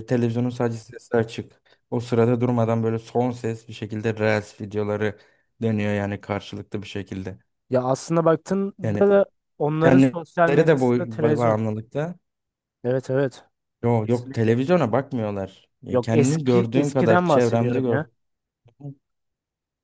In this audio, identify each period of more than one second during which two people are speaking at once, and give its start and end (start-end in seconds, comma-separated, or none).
9.8-11.6, 15.9-18.0